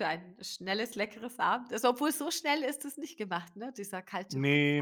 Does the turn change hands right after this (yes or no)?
yes